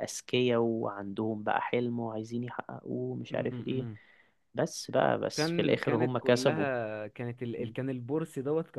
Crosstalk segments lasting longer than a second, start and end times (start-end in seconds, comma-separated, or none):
5.3-6.7